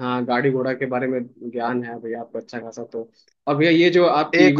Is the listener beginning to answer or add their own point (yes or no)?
no